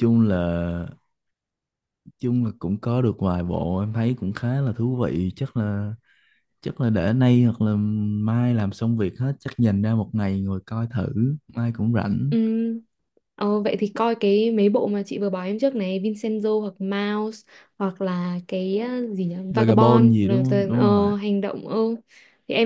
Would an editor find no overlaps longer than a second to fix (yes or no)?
no